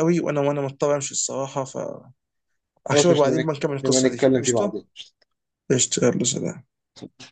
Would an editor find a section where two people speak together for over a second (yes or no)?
yes